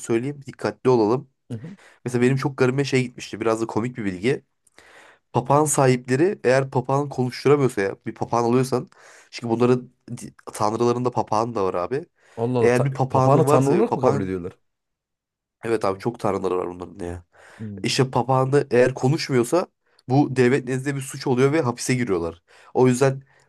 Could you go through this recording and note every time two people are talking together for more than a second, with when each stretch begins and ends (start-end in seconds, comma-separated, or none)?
12.6-14.3